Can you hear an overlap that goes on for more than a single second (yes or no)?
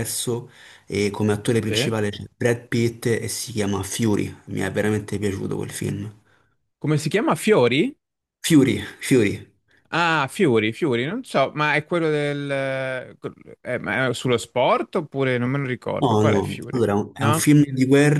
yes